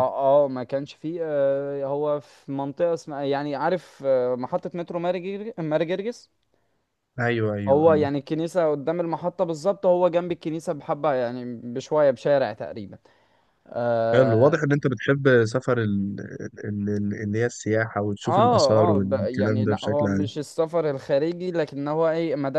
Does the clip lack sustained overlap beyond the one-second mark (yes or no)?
no